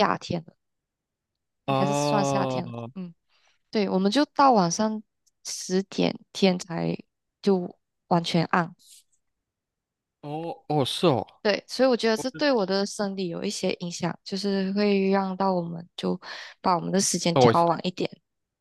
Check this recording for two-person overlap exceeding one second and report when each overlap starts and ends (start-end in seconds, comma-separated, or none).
1.7-2.9